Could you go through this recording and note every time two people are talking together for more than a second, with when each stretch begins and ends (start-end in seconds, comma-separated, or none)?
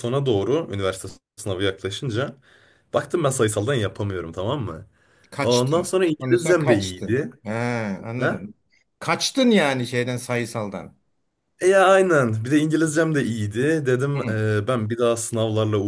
5.4-7.3